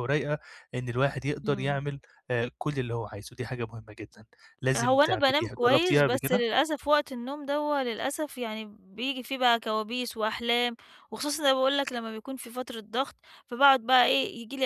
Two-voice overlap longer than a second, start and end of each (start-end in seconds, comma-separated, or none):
4.8-6.4